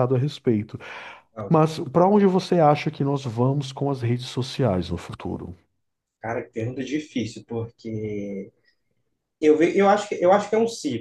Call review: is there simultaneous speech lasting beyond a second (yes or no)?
no